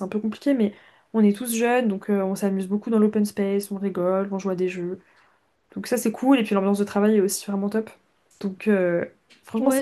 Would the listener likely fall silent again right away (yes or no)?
no